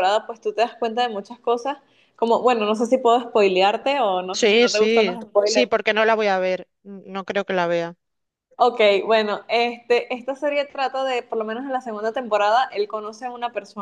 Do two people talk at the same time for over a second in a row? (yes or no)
yes